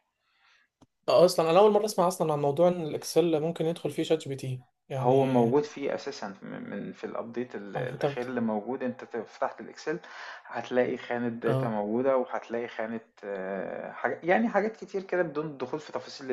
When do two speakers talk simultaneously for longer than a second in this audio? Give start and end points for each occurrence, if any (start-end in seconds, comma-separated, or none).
none